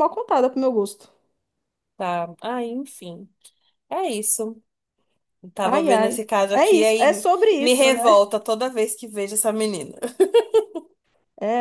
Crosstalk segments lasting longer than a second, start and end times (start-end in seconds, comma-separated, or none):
5.6-8.2